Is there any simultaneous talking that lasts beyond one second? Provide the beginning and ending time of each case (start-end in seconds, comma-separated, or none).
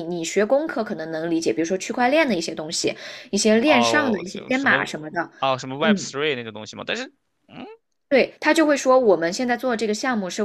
3.6-4.9